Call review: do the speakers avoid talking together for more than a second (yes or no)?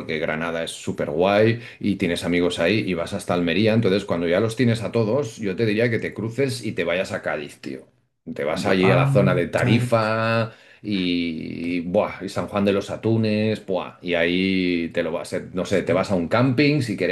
no